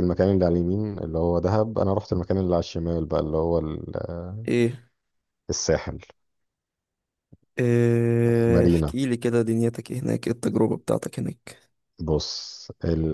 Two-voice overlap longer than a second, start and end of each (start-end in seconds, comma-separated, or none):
none